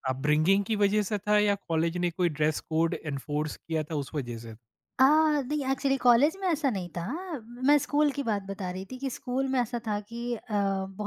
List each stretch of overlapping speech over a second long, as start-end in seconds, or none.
none